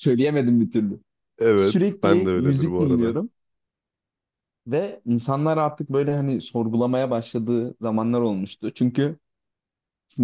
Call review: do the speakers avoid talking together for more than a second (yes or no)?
no